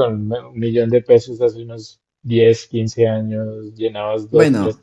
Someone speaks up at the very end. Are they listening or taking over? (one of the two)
listening